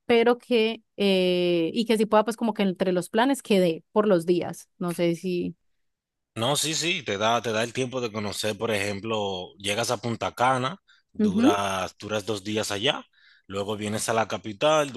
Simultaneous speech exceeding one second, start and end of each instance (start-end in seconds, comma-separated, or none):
none